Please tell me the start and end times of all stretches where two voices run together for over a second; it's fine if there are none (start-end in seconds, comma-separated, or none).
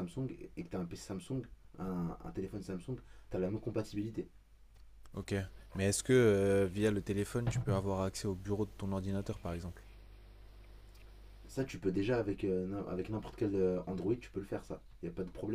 none